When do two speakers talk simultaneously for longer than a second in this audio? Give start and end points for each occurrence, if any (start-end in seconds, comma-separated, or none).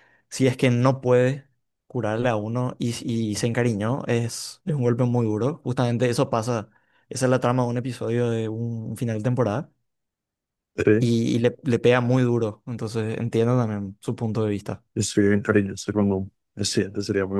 none